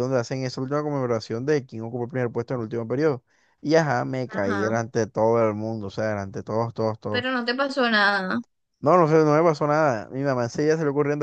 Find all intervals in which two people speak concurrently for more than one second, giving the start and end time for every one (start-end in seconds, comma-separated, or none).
none